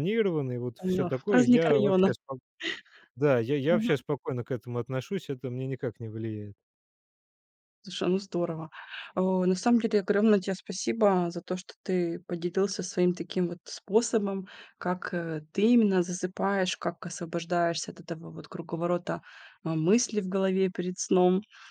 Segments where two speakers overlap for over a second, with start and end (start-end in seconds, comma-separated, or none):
0.8-2.1